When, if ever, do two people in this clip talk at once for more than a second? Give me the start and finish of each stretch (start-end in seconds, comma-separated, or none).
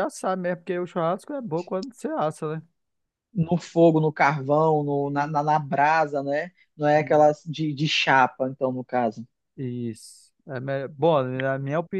none